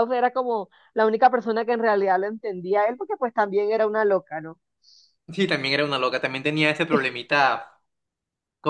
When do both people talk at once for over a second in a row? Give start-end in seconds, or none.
none